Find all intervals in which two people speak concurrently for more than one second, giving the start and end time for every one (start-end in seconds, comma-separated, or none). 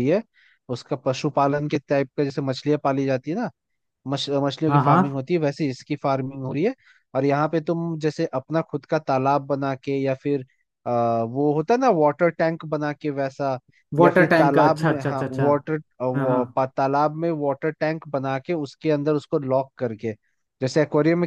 14.0-15.4